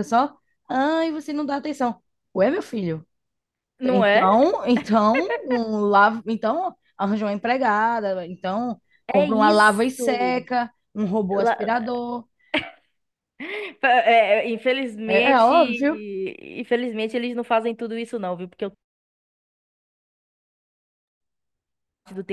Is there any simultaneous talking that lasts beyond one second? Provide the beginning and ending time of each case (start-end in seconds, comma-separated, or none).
9.1-10.4